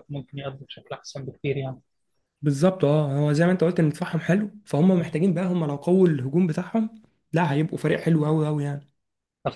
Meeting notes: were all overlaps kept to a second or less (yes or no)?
yes